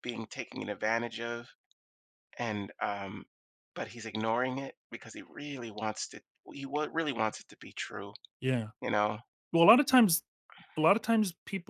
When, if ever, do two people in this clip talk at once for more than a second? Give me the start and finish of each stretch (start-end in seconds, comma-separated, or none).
none